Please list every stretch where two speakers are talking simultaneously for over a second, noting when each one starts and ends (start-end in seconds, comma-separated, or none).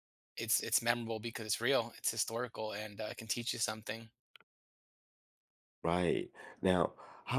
none